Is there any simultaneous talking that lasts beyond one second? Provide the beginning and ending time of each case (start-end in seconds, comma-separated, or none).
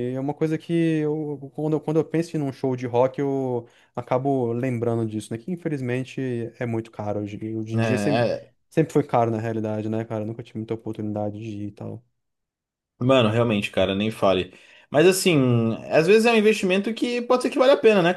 none